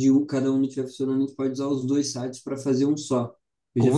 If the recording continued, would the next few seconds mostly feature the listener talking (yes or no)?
no